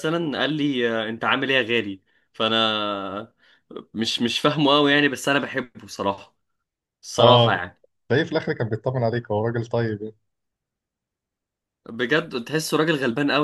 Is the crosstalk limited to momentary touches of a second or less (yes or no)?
yes